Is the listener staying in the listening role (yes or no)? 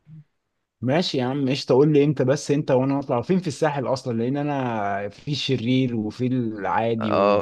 yes